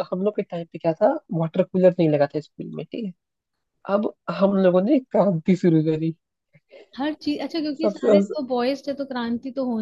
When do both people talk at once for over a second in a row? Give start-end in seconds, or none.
none